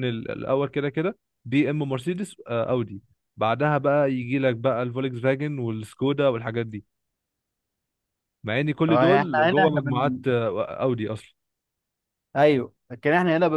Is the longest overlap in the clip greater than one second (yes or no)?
yes